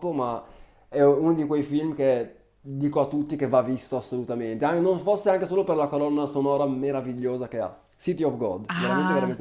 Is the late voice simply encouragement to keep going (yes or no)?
no